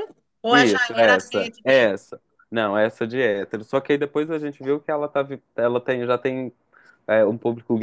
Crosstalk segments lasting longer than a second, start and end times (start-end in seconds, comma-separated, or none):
0.5-1.9